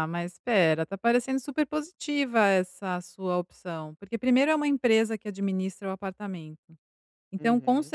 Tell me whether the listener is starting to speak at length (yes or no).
no